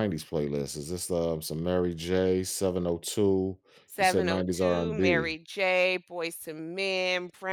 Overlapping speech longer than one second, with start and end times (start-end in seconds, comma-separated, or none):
4.0-5.4